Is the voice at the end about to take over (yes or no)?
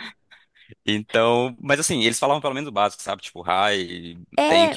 yes